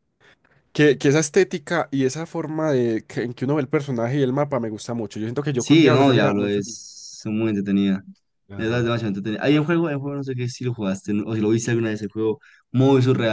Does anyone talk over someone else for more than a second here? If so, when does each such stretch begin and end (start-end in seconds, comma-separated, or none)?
5.5-6.8